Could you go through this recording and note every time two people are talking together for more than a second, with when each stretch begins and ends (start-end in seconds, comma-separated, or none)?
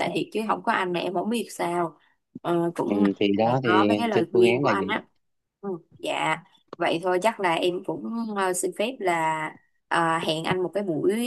2.9-4.9